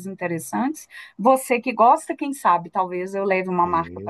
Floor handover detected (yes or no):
yes